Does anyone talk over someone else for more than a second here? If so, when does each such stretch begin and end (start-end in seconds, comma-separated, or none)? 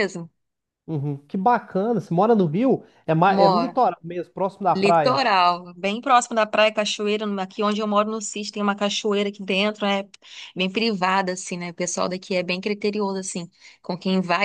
none